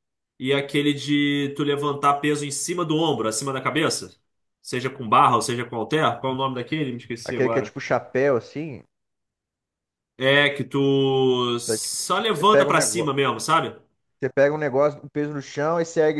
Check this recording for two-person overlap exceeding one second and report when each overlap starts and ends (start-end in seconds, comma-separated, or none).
11.7-13.1